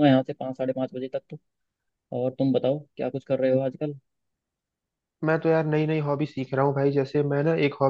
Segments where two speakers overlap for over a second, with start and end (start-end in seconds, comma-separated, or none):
none